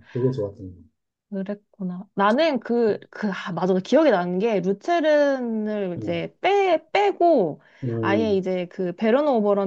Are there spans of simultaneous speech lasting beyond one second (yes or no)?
no